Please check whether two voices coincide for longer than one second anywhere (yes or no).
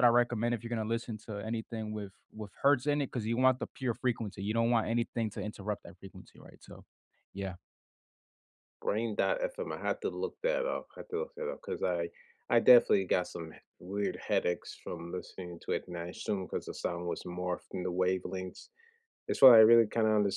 no